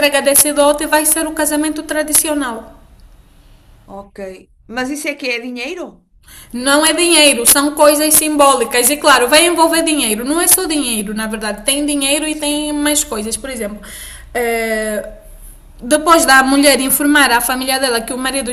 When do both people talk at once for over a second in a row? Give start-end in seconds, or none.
none